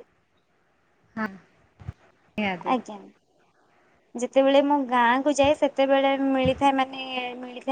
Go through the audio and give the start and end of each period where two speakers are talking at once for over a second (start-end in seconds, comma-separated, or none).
none